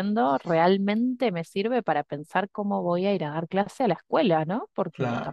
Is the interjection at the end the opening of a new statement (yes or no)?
no